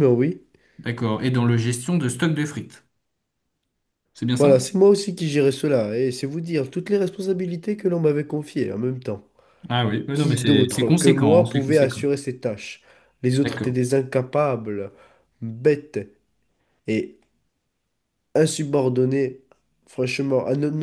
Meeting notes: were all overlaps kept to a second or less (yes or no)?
no